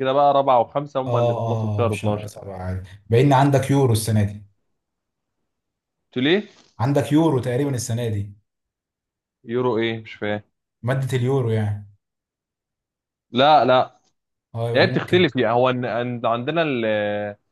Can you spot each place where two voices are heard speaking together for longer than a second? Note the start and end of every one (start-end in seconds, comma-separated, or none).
1.1-2.3